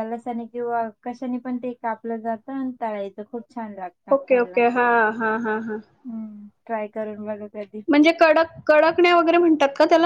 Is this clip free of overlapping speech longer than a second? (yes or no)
yes